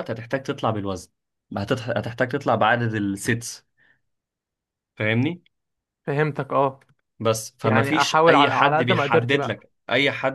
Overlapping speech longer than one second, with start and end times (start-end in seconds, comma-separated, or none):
7.6-9.7